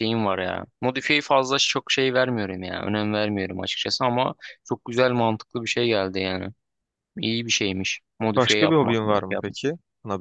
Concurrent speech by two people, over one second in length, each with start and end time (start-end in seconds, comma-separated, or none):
8.3-9.6